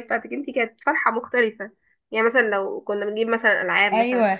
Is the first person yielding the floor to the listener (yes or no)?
no